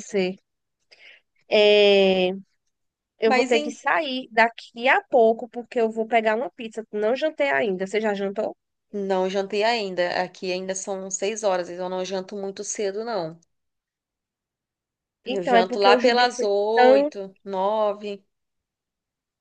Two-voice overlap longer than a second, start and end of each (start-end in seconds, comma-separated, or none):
15.2-17.1